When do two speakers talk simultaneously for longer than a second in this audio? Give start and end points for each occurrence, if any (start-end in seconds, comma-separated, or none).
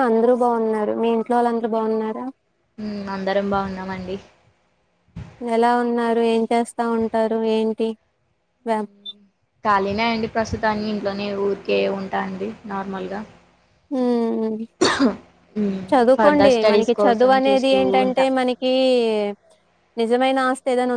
16.1-18.2